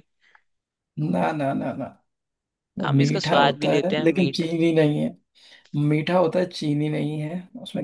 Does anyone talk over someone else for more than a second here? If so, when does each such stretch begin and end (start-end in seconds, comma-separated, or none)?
2.9-4.4